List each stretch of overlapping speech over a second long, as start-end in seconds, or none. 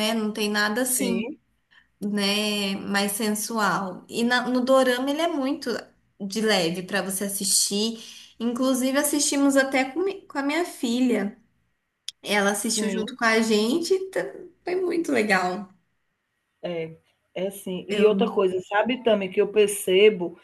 none